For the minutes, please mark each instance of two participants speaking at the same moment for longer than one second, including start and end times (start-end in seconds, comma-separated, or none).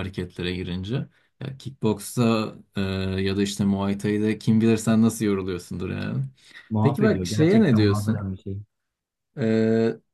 6.8-8.3